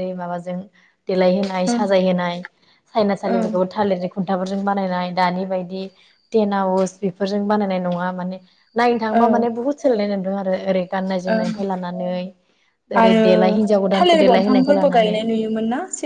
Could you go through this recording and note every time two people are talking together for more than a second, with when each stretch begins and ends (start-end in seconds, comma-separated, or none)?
14.0-15.2